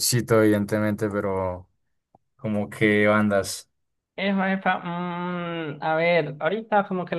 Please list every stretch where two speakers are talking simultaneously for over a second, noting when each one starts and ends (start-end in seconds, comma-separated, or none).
none